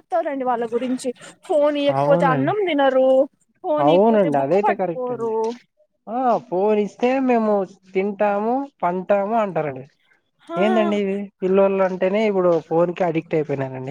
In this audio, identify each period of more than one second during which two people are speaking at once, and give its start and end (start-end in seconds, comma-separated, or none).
3.8-5.3